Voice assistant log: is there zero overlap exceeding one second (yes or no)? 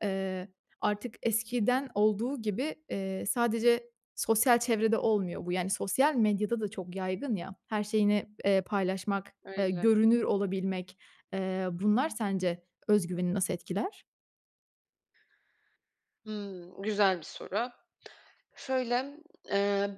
yes